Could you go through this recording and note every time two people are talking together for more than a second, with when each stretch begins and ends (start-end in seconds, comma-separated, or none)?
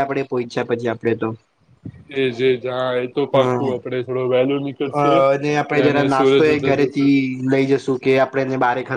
5.0-7.1